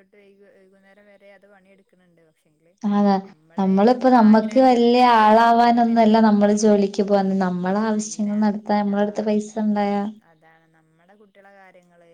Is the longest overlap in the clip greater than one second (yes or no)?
yes